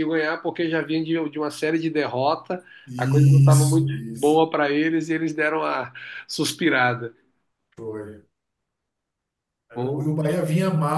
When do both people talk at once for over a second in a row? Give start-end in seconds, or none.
2.9-4.4